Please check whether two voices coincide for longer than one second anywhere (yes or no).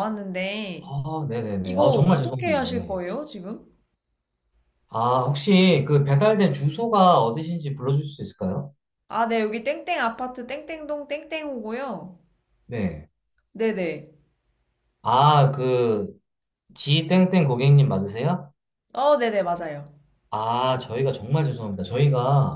yes